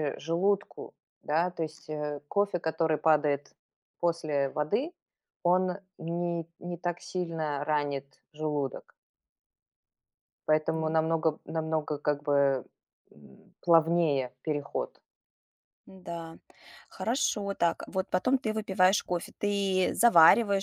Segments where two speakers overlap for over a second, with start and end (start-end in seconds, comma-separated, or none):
none